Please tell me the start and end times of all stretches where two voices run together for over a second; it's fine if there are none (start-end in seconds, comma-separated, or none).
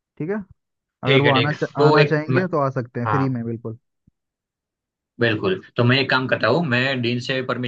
1.0-2.5